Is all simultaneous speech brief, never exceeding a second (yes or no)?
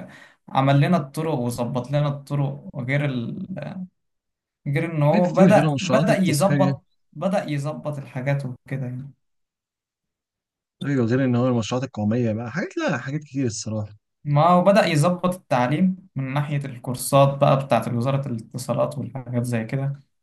no